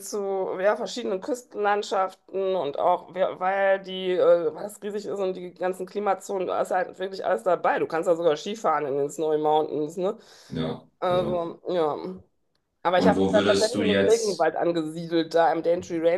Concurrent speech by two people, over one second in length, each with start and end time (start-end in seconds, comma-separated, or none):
12.9-14.5